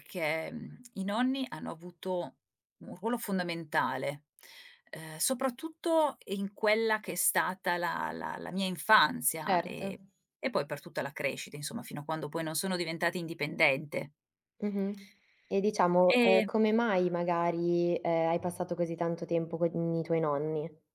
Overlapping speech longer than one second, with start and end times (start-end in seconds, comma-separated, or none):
none